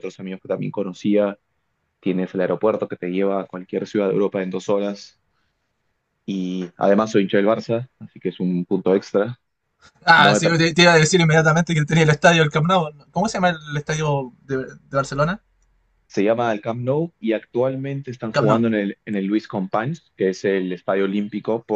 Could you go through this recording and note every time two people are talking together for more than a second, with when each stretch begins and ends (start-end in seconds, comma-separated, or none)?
none